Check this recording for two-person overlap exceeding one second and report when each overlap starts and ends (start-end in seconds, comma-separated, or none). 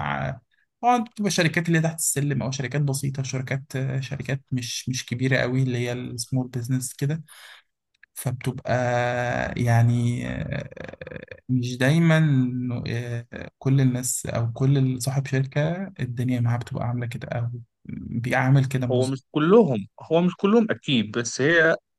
none